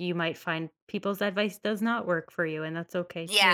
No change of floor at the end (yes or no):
no